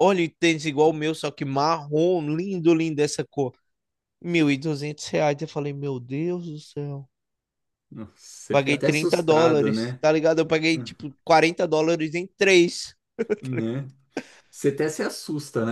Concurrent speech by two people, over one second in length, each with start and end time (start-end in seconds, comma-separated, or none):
8.5-10.0